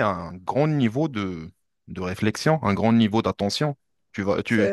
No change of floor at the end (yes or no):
yes